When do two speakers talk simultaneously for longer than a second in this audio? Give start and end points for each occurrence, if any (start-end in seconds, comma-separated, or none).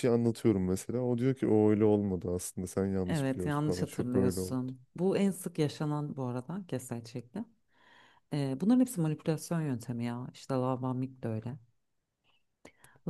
3.1-4.6